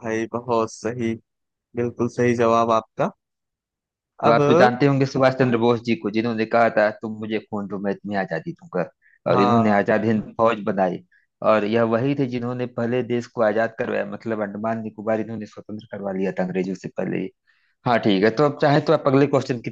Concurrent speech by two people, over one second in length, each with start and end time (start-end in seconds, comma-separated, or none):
none